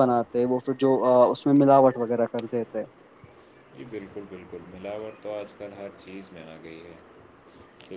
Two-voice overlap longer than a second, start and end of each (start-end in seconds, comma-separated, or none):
none